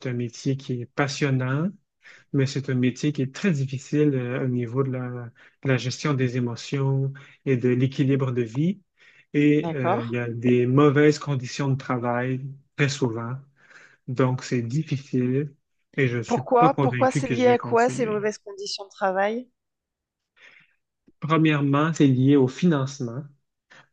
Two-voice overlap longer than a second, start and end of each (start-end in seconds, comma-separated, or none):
16.2-18.2